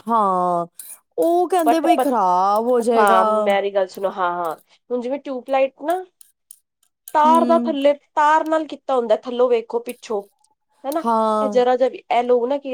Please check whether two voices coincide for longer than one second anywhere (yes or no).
no